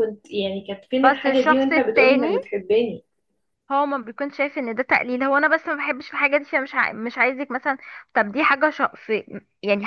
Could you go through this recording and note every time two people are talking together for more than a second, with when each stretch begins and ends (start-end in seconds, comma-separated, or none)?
1.0-2.3